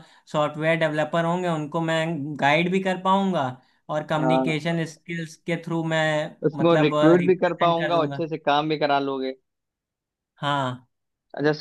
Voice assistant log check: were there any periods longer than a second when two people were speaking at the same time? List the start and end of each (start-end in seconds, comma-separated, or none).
6.5-8.2